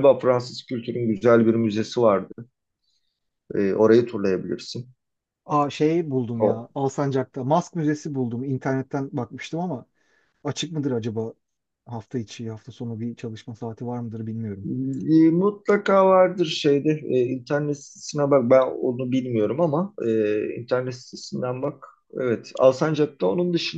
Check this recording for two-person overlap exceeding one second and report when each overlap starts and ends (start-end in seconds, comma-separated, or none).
none